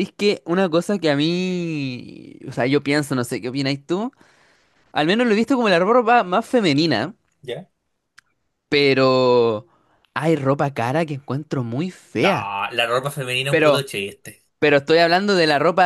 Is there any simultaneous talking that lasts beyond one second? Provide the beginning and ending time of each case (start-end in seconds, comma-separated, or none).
none